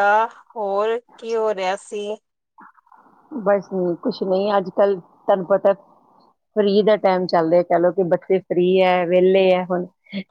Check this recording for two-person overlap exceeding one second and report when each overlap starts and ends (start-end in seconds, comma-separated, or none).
none